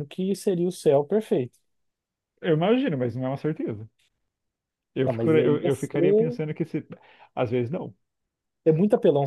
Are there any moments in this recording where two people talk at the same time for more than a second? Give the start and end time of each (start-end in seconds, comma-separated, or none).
5.1-6.4